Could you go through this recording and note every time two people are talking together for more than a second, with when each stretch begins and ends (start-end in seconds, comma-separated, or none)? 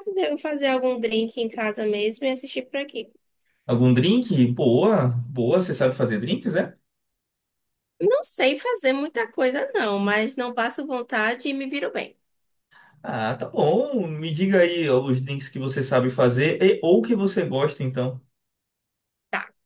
none